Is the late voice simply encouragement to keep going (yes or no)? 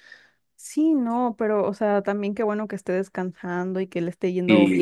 yes